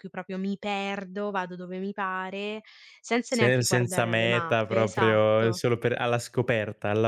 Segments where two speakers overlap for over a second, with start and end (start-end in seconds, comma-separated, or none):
3.3-5.6